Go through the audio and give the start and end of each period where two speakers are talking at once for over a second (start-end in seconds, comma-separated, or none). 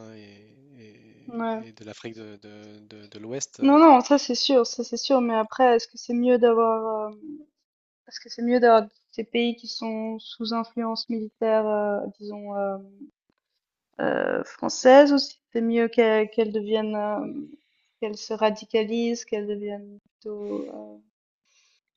none